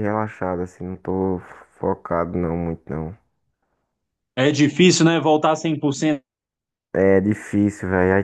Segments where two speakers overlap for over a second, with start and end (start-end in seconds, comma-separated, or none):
none